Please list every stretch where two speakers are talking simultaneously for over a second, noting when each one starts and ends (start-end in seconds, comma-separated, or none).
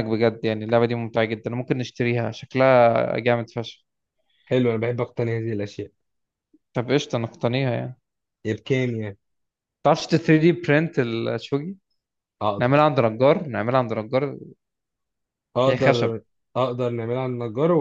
none